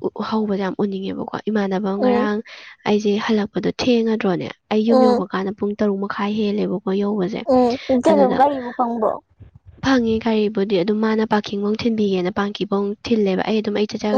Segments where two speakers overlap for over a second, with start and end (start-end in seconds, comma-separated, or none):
none